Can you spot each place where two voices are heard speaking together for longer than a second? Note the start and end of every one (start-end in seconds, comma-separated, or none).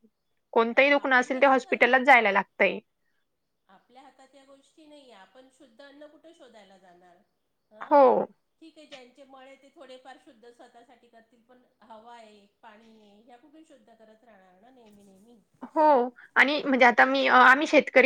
0.7-2.2